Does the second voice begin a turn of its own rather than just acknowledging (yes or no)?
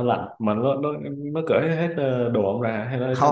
yes